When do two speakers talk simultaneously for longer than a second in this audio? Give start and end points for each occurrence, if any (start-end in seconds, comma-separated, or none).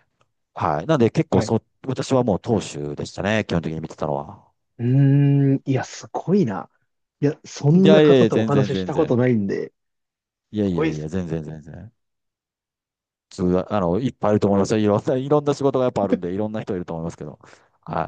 7.7-9.2